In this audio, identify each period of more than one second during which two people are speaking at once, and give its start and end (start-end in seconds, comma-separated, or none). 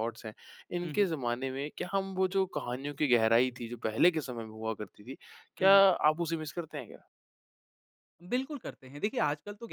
none